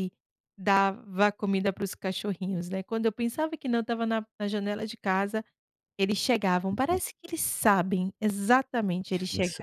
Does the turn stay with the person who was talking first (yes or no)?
no